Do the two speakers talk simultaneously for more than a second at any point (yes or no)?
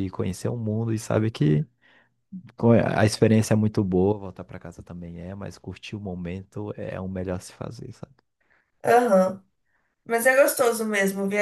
no